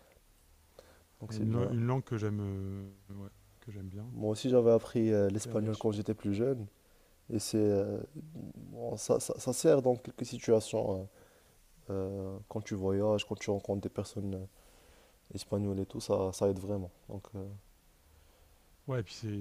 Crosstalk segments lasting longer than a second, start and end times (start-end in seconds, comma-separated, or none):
none